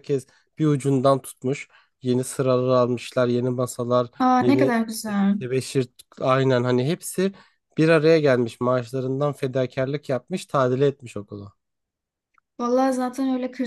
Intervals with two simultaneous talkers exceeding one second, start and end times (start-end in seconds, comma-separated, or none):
none